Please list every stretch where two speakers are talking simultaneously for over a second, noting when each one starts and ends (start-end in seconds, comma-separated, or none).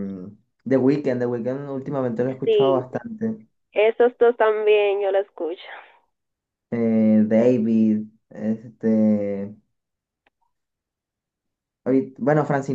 none